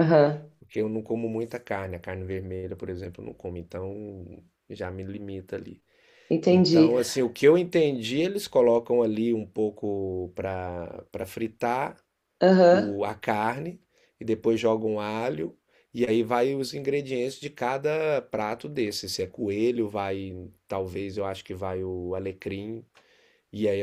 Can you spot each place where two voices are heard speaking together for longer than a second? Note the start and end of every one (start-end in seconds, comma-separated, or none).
none